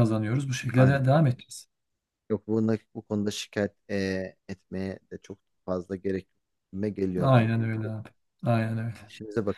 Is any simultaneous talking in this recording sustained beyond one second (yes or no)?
no